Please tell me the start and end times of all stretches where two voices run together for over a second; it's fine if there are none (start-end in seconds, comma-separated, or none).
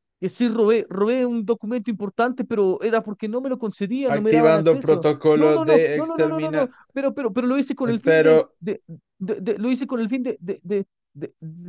4.1-6.7